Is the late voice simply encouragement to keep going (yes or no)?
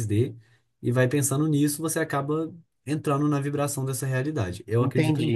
no